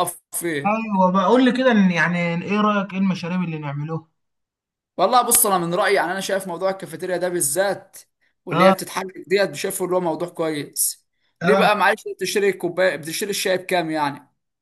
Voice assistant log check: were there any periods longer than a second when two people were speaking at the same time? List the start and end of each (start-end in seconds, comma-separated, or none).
none